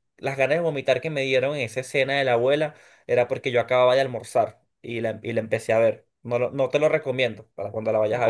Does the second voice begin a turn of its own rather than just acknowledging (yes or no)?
yes